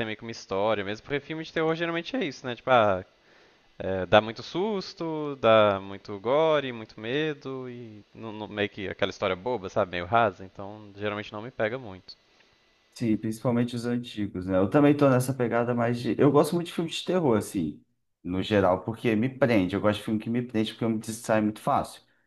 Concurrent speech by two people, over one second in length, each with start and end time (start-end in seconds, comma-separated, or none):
none